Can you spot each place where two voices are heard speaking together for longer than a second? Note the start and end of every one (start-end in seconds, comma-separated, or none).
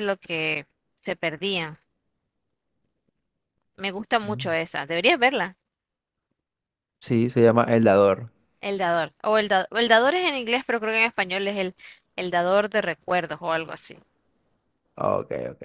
none